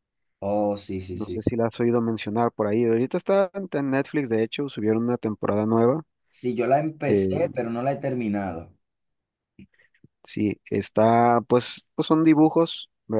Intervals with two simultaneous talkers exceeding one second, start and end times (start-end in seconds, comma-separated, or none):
none